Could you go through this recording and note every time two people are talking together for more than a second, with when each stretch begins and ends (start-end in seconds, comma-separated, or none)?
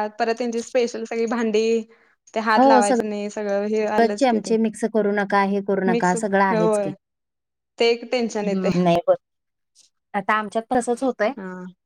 none